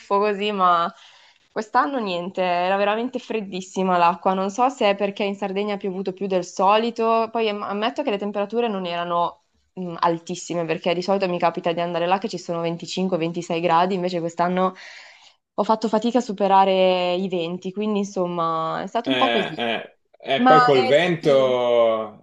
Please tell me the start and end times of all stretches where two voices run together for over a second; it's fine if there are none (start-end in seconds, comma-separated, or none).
20.4-21.6